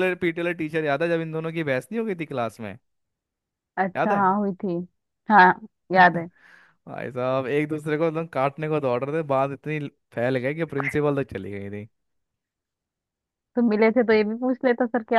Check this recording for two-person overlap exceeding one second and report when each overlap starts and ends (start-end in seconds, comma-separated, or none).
none